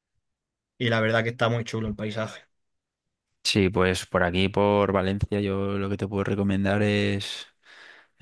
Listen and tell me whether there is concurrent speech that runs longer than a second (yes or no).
no